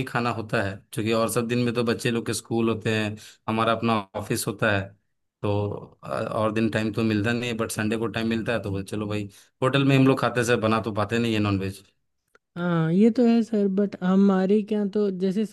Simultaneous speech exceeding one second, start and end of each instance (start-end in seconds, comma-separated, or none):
none